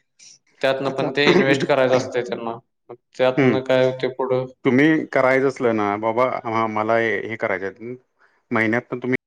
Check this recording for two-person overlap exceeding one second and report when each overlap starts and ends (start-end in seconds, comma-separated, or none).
none